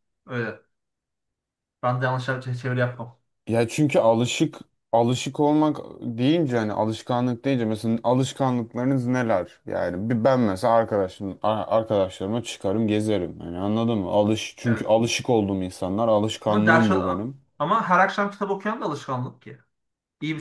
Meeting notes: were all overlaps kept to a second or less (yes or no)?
yes